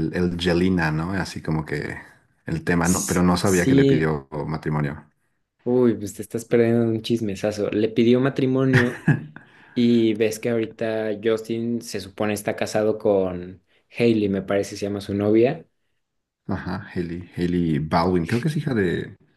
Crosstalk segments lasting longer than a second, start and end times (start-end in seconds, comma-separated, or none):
2.8-4.1